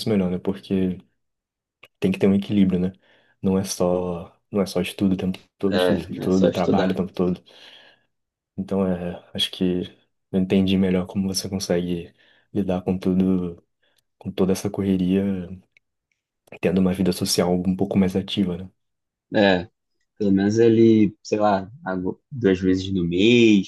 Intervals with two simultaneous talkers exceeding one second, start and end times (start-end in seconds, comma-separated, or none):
5.7-7.0